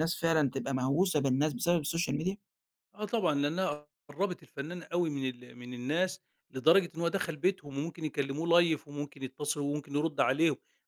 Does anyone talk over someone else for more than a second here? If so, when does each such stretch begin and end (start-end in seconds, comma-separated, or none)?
none